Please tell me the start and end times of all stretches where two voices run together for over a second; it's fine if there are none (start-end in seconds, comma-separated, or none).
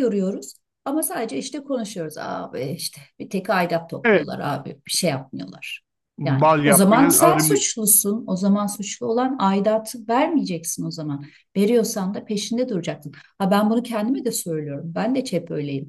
6.2-7.7